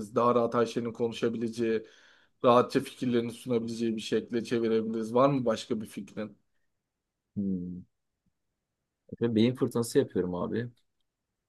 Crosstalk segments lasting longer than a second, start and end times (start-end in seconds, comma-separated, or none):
none